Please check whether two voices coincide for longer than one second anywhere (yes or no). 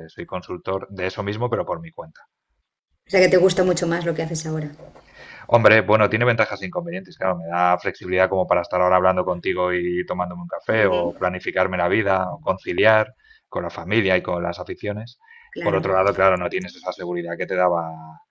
no